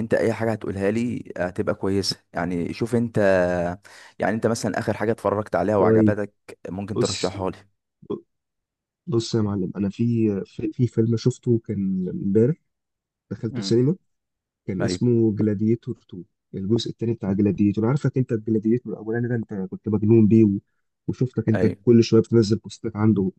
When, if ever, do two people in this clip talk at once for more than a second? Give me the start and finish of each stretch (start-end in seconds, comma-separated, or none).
none